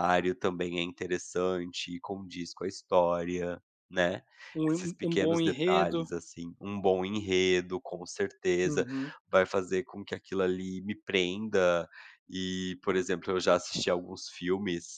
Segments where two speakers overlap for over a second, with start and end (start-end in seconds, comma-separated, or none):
4.7-6.0